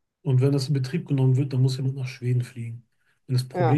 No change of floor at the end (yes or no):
yes